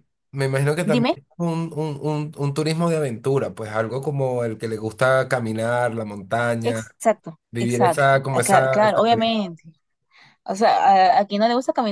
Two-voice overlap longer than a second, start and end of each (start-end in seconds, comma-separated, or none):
7.5-9.3